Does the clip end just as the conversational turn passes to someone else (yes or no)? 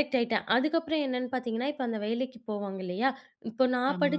no